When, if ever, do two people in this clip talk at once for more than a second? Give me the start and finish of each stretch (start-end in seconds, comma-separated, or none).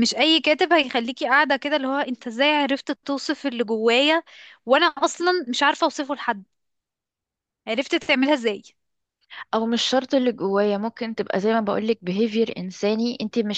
none